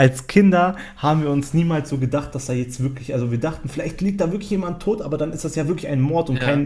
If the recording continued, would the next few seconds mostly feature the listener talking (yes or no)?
no